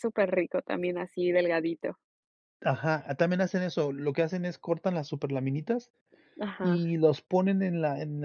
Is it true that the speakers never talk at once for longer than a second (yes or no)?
yes